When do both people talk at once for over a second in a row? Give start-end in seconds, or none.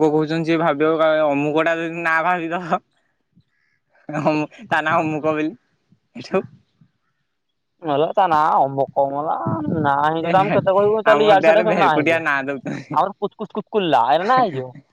11.1-12.9